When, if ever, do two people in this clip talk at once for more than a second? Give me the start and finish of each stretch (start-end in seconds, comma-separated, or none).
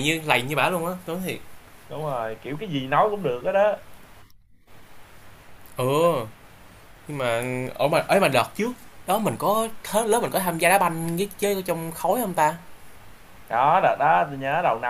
none